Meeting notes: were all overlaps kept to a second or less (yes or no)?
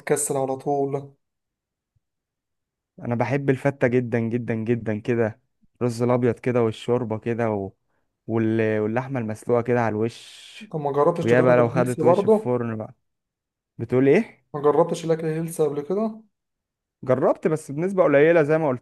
no